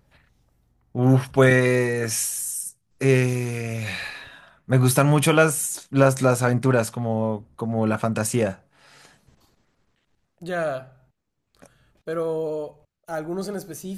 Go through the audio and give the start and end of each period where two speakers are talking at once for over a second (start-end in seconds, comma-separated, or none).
none